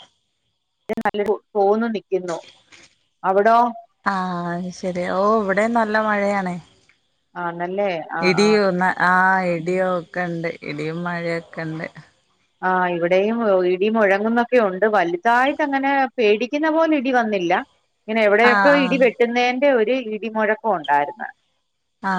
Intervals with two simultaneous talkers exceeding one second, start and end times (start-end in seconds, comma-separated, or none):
none